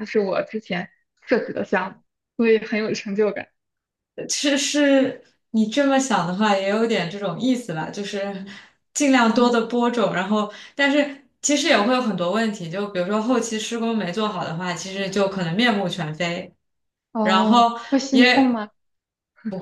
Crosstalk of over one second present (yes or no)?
yes